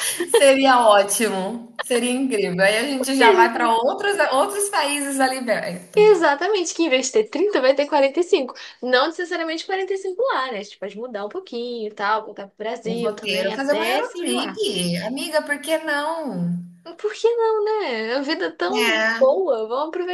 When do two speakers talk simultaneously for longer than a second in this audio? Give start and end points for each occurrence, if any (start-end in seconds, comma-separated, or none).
12.8-14.5